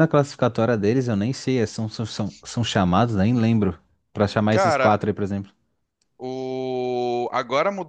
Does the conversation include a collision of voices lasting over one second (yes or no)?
no